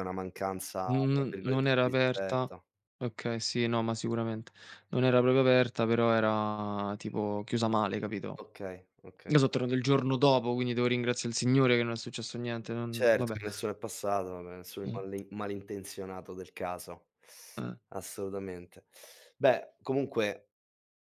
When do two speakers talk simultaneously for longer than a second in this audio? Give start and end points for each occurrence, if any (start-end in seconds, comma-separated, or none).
0.9-2.5